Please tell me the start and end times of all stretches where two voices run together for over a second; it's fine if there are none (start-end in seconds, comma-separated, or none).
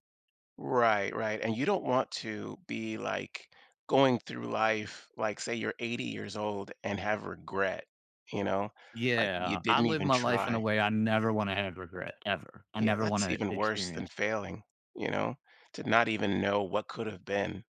9.2-10.6, 12.8-14.1